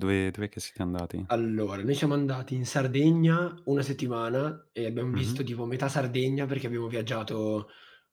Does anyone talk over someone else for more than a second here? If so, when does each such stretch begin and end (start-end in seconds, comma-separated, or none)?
none